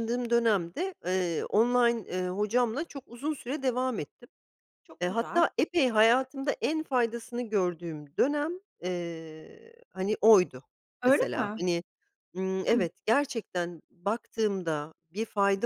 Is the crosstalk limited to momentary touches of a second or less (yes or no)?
yes